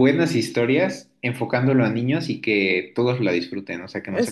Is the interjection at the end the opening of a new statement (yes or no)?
yes